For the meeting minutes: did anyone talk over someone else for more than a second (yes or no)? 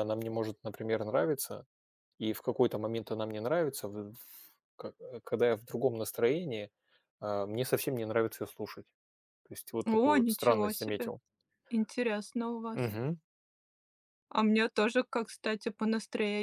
yes